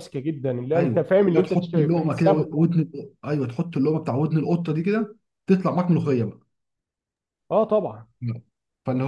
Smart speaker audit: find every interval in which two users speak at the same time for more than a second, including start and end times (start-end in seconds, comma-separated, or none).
0.8-2.6